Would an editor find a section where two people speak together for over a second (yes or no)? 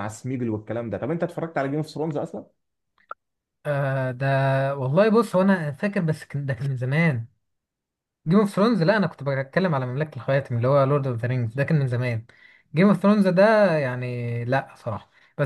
no